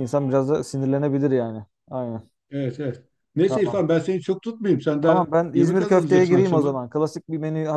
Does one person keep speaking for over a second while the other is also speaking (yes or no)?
yes